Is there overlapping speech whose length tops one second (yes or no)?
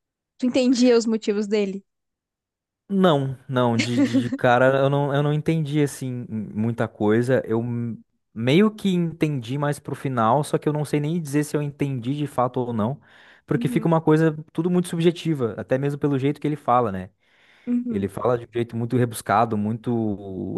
no